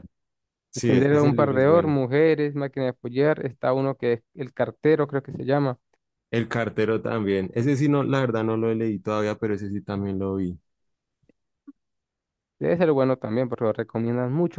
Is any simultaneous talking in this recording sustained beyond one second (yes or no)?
yes